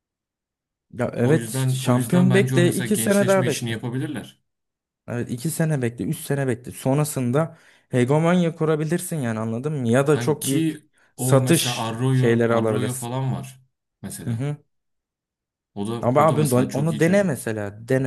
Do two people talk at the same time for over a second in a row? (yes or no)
yes